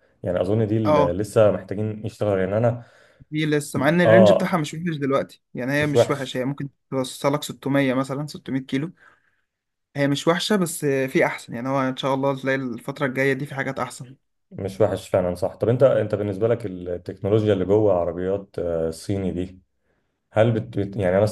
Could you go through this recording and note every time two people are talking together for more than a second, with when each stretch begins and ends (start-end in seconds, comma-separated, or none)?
none